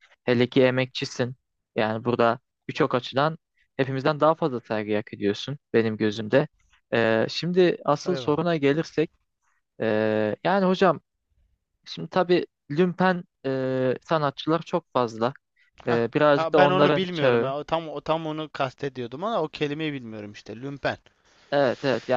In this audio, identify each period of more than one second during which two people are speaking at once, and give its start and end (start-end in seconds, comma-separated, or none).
15.9-17.5